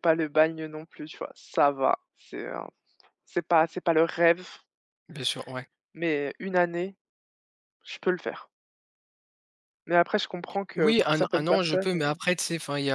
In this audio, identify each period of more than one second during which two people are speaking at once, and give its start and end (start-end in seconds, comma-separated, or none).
10.8-12.1